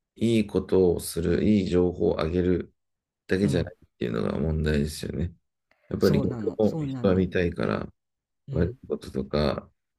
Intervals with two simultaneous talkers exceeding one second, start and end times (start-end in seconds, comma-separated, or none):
6.0-7.3